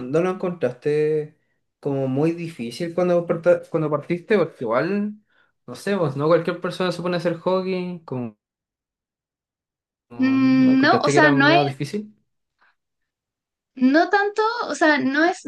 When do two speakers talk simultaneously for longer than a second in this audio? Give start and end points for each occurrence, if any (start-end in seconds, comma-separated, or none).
10.2-11.6